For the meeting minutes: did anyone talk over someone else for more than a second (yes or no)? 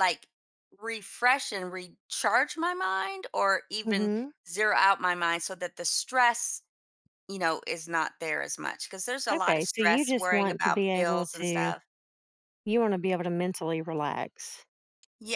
yes